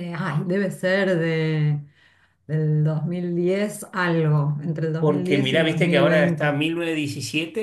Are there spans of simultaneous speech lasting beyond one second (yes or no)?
yes